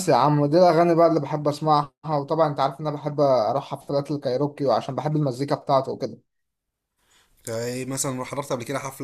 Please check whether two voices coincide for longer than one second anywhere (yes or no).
no